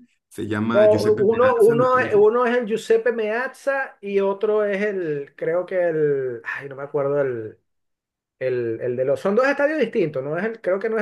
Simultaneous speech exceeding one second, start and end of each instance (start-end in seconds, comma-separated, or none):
0.7-2.2